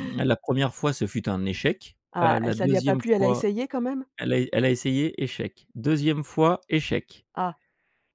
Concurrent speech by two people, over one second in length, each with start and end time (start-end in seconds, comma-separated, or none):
2.1-3.5